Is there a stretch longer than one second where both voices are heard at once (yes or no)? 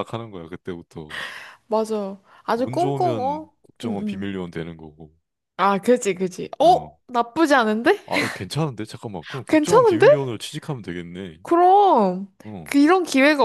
yes